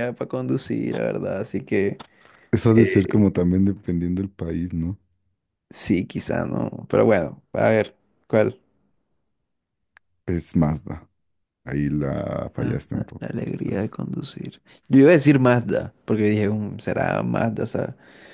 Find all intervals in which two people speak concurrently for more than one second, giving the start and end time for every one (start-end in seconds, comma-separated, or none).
12.6-13.9